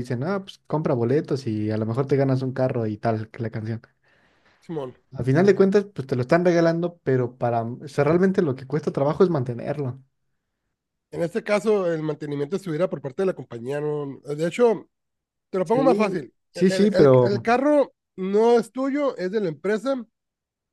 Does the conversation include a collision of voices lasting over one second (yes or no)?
yes